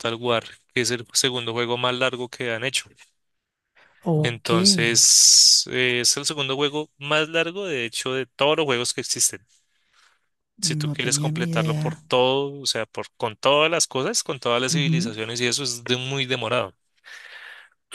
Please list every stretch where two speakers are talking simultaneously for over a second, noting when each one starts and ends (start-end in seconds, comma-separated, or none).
10.8-12.0